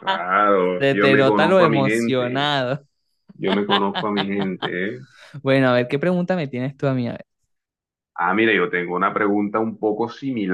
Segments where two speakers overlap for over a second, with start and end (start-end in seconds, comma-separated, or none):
0.8-2.5